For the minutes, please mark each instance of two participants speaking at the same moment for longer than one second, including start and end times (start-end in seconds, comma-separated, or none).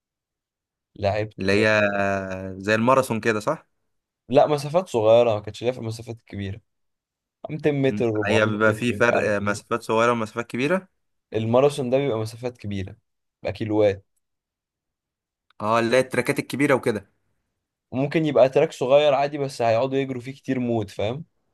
7.9-9.6